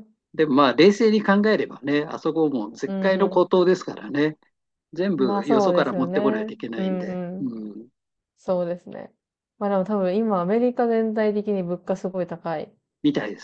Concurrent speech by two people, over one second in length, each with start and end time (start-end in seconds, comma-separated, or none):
5.2-7.5